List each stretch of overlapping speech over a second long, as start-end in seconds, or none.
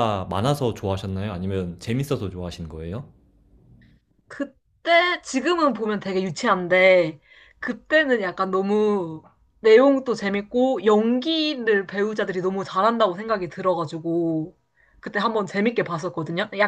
none